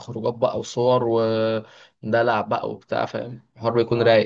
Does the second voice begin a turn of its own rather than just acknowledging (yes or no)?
yes